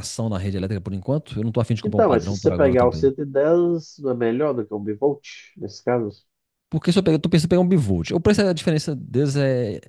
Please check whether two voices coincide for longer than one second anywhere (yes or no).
yes